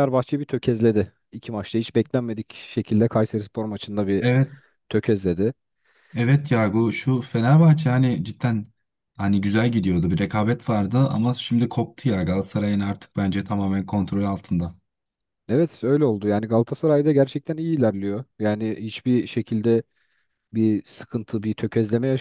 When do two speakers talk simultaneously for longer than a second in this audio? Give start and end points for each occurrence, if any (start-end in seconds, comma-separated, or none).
none